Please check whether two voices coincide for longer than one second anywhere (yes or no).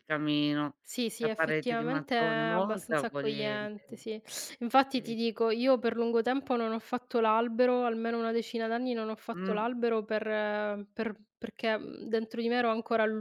yes